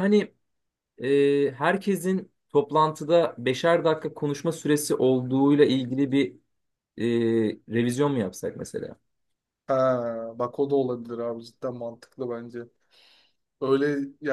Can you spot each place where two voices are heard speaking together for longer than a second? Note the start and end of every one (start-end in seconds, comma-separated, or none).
none